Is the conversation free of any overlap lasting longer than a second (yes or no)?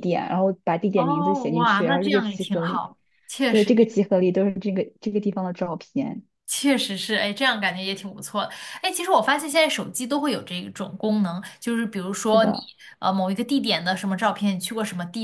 no